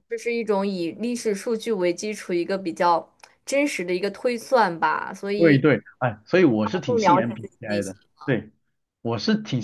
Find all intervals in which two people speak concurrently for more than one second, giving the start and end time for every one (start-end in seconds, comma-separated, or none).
6.6-8.0